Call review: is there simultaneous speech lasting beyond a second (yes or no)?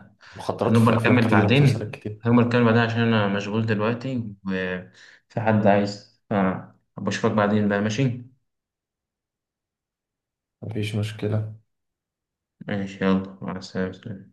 yes